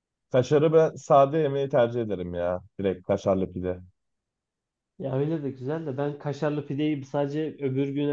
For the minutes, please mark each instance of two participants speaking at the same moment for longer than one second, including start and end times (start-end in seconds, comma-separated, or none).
none